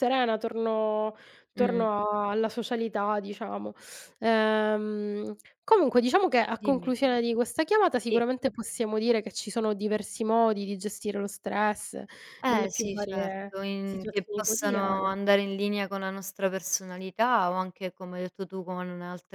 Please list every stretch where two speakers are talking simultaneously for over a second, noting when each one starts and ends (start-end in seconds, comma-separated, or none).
12.4-15.1